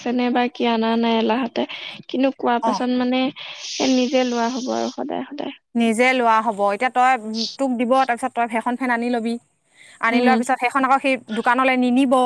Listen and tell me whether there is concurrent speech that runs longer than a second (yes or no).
no